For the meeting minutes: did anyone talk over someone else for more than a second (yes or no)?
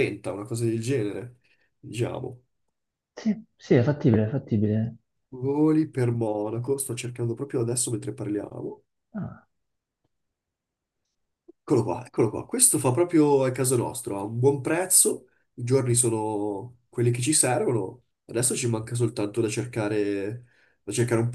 no